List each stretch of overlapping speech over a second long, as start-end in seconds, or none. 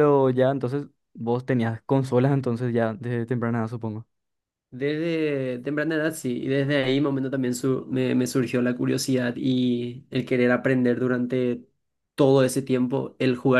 none